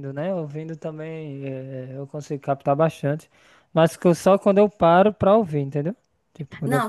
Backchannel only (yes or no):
yes